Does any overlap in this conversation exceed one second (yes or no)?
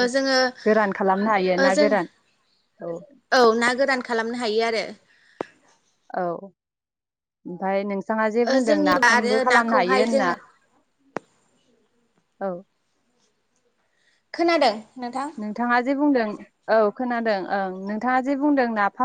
yes